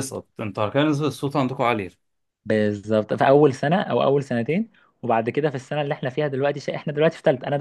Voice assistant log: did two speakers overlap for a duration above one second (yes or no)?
no